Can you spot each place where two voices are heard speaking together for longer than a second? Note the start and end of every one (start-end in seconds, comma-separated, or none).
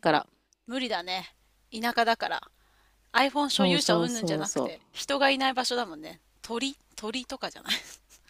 3.5-4.8